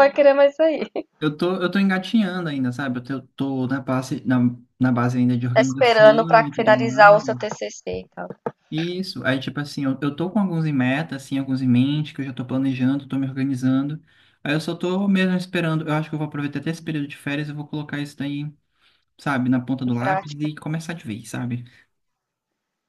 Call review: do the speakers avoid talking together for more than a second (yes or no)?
no